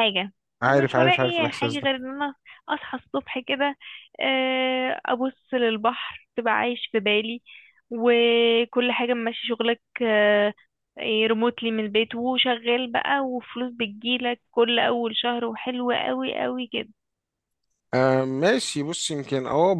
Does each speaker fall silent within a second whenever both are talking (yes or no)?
no